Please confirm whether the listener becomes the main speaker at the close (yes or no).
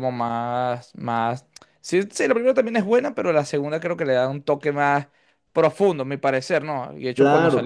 yes